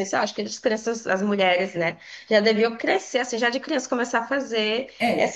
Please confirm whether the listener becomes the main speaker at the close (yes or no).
yes